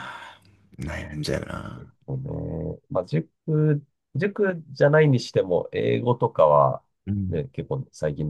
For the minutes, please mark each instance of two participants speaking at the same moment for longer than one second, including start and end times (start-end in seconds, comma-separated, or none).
none